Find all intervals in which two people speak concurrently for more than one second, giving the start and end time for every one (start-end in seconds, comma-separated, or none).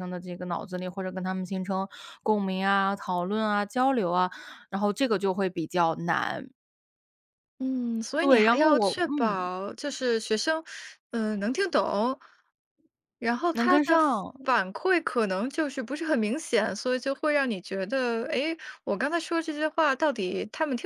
8.2-9.5